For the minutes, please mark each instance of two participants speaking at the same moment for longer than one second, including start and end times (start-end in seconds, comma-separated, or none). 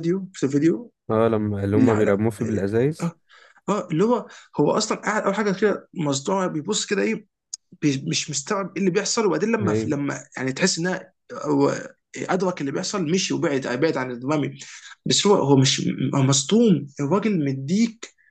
none